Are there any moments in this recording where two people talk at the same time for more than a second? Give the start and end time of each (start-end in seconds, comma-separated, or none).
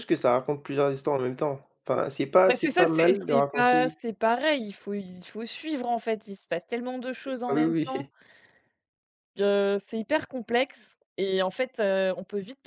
2.5-4.0